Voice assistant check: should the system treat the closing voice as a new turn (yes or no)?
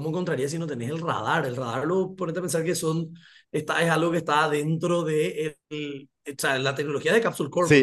yes